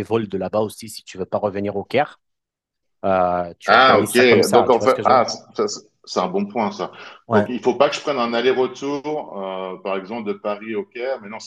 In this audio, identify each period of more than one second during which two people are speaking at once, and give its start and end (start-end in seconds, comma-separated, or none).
3.7-5.2